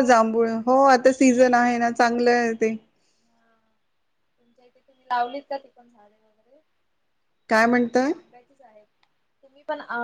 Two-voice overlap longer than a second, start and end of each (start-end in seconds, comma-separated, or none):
none